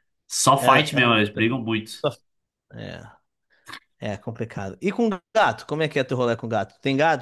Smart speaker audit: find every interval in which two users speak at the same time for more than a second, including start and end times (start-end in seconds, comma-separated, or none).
0.6-2.0